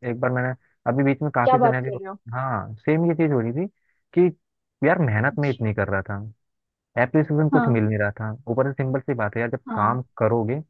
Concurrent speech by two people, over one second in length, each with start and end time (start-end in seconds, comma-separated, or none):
none